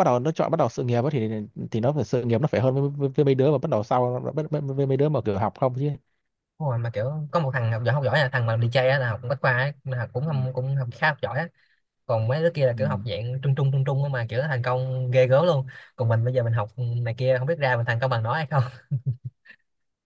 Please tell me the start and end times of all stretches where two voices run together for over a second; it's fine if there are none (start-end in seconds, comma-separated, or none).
none